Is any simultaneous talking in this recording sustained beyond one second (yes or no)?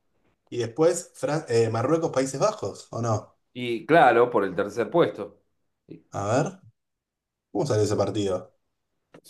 no